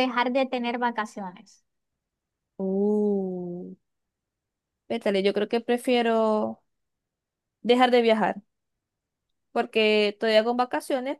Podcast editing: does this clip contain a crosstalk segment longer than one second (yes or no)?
no